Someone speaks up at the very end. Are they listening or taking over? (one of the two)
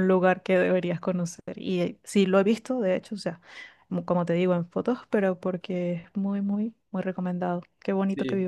taking over